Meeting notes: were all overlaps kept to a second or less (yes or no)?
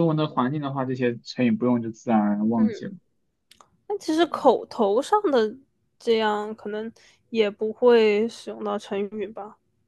yes